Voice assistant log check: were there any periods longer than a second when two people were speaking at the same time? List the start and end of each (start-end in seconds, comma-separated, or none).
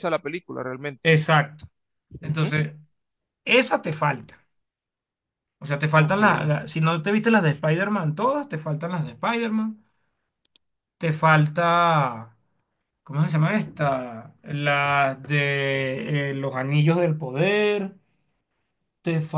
none